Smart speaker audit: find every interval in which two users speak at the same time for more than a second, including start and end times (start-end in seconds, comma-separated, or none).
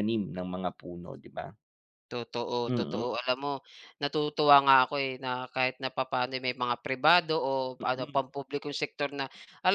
none